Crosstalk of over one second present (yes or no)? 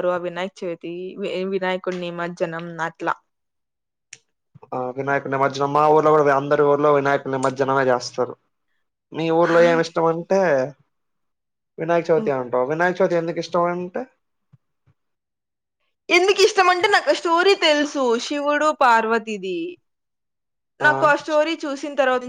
no